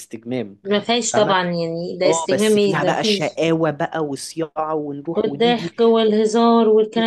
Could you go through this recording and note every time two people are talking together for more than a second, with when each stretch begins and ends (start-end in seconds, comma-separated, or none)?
2.0-3.4